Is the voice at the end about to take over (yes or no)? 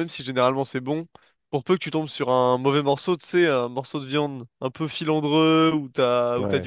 no